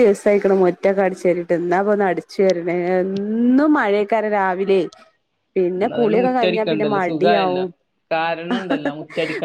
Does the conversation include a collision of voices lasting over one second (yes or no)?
yes